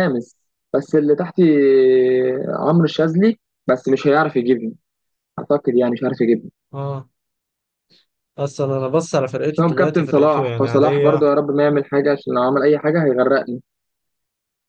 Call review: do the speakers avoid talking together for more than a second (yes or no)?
no